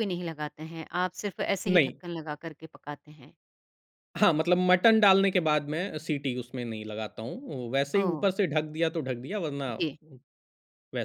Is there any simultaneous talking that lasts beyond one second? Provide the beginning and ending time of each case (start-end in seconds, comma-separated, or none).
none